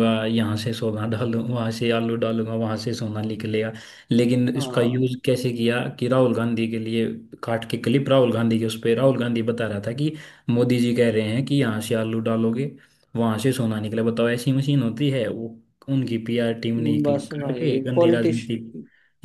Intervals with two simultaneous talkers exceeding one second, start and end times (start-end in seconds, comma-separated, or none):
17.0-18.4